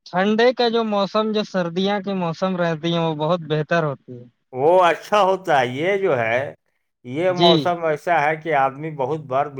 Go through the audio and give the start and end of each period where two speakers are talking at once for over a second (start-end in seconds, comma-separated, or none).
none